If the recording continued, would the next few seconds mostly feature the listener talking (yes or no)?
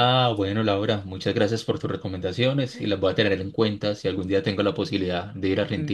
yes